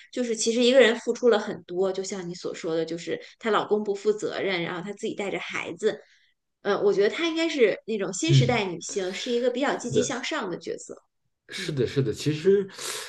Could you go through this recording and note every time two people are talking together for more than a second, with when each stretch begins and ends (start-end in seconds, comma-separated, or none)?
none